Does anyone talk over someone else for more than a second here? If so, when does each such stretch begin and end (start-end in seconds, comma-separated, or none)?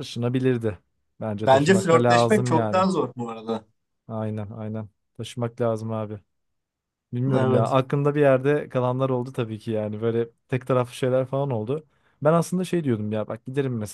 1.5-2.9